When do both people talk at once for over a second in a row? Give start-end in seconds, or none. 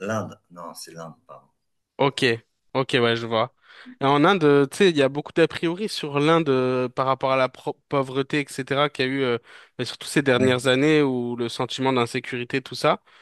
none